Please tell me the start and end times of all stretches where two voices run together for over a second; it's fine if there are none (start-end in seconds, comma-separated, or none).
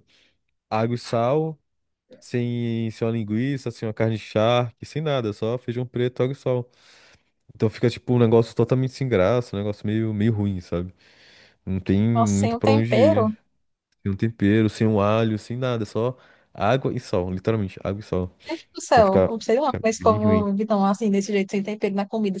12.1-13.3, 18.9-20.5